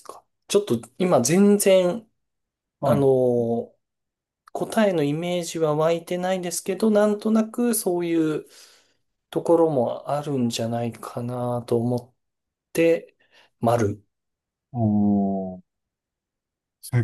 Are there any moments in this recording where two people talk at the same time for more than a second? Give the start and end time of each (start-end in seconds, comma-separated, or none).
none